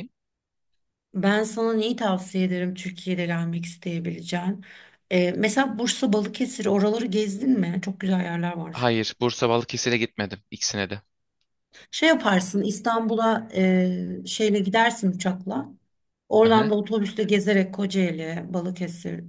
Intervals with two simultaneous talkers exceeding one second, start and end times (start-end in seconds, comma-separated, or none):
none